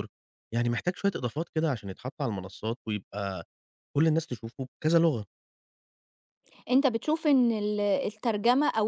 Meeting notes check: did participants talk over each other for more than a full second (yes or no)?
no